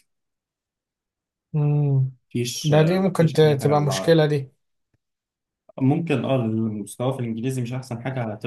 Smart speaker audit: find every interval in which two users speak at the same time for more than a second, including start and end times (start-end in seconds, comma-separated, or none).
2.6-4.2